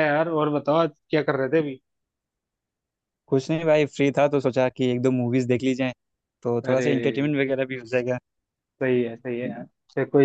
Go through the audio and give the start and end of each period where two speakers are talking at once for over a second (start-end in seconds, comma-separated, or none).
none